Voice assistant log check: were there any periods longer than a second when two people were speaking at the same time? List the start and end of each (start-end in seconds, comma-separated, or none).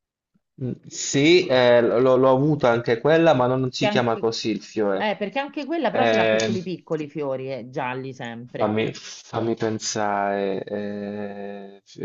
none